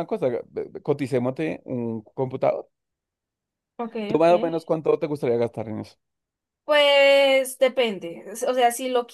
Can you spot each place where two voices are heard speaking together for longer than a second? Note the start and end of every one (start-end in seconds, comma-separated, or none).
none